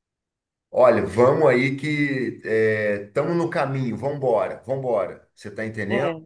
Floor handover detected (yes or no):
no